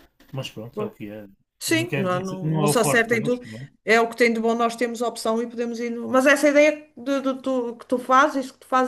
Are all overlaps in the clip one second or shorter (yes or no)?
no